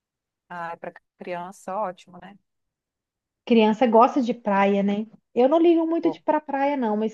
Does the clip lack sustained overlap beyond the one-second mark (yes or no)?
yes